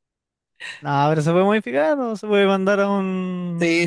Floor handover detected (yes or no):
yes